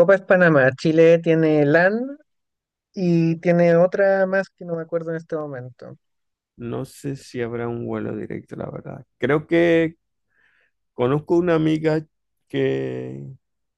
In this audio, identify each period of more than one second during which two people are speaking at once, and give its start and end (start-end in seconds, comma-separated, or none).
none